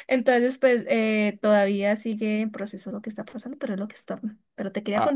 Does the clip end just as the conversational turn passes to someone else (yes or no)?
yes